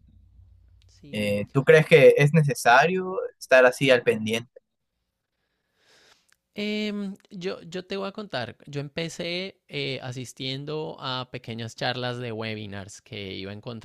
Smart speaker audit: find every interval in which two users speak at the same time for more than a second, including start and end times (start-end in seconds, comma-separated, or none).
none